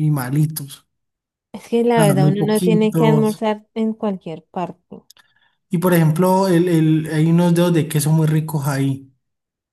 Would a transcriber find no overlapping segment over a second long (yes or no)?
no